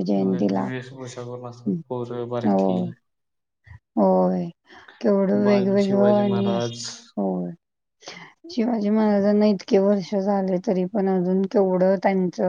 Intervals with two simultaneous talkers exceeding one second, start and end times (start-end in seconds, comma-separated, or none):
5.4-6.8